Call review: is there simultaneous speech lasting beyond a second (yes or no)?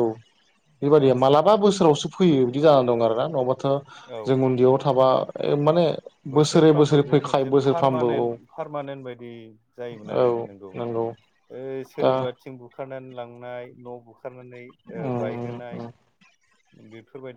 yes